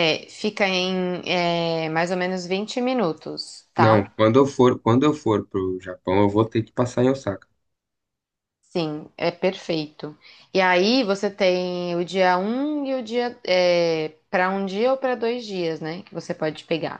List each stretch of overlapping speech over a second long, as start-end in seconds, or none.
none